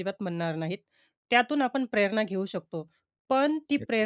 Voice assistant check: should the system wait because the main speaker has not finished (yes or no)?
yes